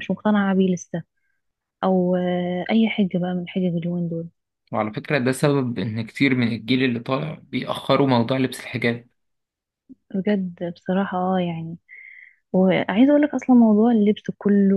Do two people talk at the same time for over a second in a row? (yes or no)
no